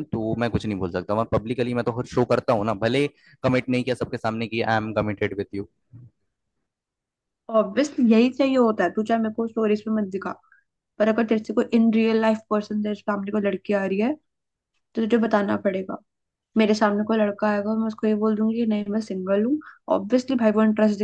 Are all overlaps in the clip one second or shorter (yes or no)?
yes